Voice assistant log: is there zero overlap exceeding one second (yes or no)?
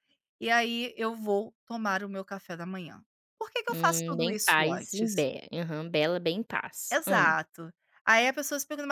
no